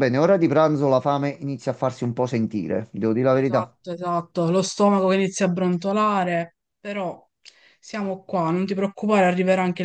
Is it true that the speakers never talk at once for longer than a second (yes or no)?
yes